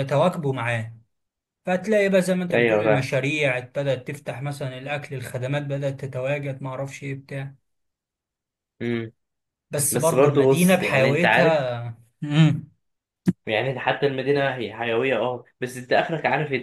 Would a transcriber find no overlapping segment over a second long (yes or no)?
no